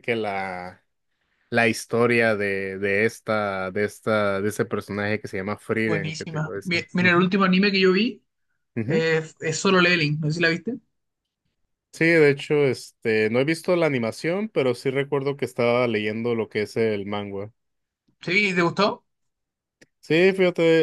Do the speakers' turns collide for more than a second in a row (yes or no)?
yes